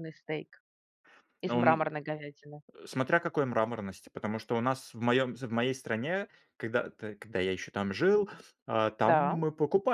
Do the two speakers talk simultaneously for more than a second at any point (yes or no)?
no